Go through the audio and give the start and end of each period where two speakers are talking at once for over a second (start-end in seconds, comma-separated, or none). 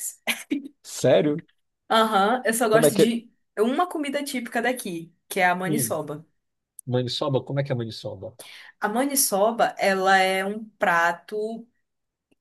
none